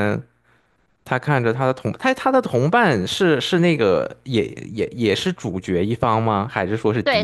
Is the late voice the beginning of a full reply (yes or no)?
yes